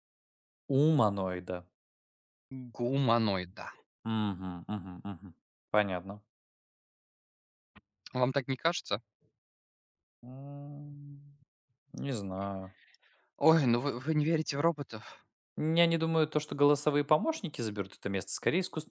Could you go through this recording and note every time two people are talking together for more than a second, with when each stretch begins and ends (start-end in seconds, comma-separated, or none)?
none